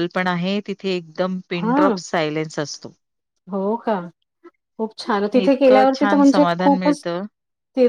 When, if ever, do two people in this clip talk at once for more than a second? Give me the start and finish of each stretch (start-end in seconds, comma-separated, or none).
5.5-7.0